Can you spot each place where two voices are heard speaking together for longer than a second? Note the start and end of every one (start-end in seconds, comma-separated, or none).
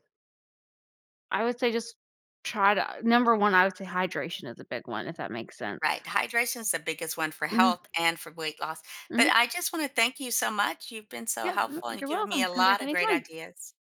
11.4-13.2